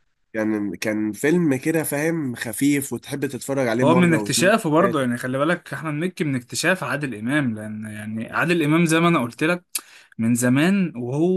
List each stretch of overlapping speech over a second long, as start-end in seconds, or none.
3.8-5.1